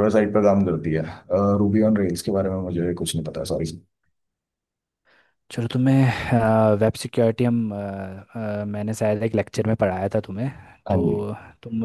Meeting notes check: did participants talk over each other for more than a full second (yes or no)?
no